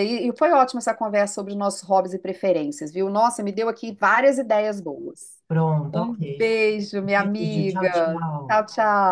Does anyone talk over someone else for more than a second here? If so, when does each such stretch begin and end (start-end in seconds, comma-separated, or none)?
7.2-8.6